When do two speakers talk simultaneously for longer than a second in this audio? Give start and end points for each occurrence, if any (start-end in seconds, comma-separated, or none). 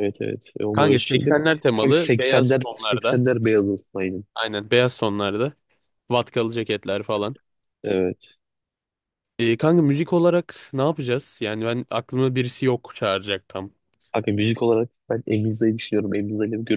0.7-3.2